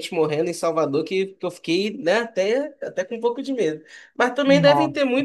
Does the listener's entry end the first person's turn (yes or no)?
no